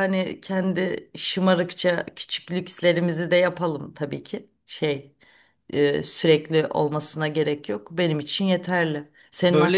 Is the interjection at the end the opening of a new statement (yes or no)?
no